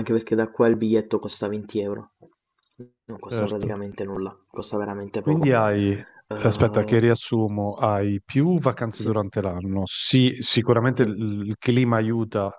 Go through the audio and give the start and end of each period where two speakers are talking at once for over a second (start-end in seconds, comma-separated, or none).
none